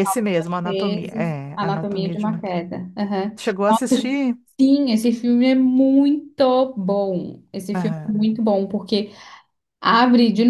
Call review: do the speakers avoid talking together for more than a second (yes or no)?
no